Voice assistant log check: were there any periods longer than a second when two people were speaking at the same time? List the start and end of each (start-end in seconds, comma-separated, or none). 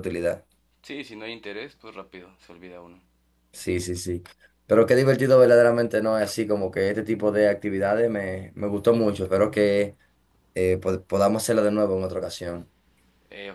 none